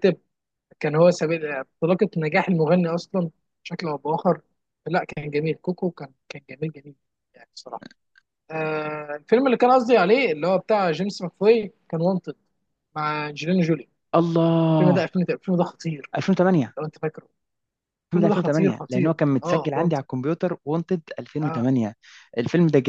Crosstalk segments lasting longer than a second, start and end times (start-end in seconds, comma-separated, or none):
18.1-20.0